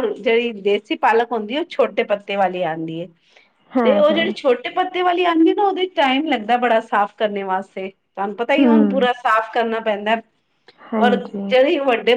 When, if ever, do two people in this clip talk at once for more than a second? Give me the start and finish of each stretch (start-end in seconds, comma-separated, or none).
none